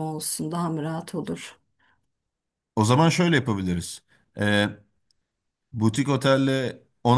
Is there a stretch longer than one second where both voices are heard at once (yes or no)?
no